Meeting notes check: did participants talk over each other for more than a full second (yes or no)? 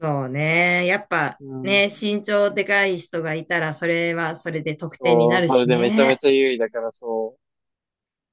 yes